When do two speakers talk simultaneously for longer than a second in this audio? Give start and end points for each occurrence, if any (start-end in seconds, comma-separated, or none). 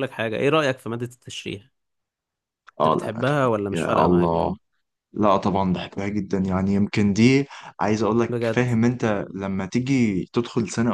2.8-4.5